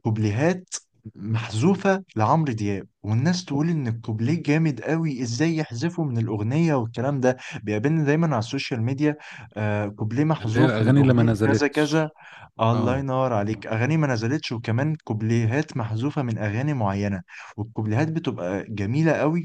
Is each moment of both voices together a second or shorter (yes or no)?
no